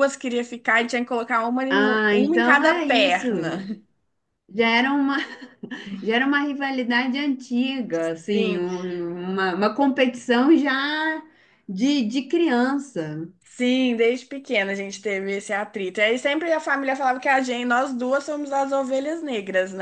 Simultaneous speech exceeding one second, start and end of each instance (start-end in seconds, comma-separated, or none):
1.7-3.6